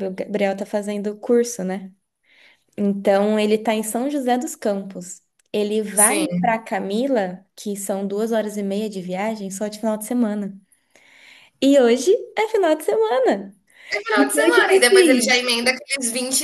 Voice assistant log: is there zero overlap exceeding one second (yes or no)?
no